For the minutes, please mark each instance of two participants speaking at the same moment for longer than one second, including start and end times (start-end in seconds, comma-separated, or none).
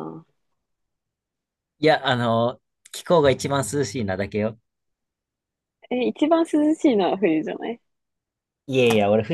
none